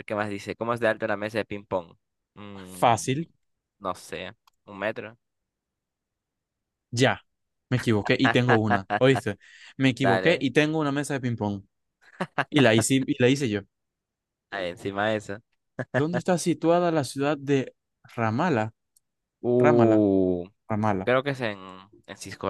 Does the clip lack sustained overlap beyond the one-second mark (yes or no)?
yes